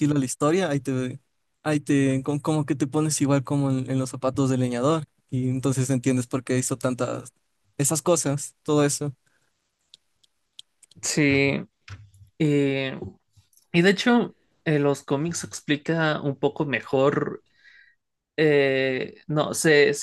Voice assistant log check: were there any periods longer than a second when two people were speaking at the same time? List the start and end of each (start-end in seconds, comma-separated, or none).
none